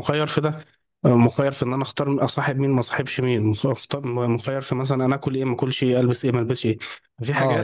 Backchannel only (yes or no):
no